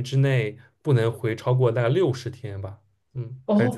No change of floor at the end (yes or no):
no